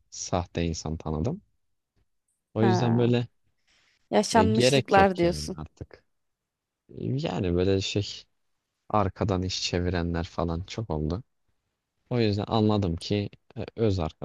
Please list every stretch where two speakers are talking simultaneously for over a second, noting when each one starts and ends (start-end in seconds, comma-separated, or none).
4.3-5.6